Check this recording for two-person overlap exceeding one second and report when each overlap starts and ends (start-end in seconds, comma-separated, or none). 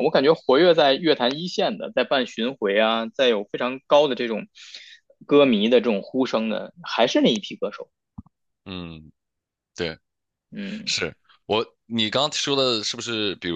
none